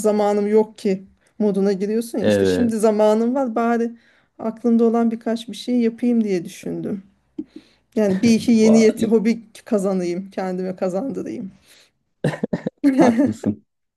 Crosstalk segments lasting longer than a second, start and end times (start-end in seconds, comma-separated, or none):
none